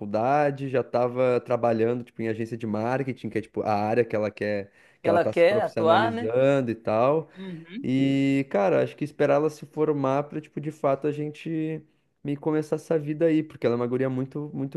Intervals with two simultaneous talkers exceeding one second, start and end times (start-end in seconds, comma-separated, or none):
5.0-6.3